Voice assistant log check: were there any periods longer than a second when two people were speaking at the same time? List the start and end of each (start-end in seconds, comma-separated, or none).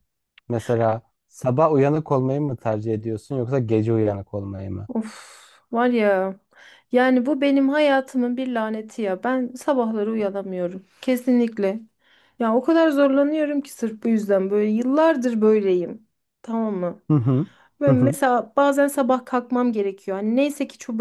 none